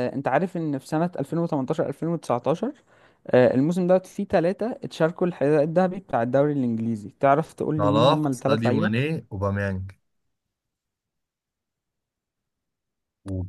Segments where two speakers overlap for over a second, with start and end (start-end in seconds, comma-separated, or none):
7.8-9.0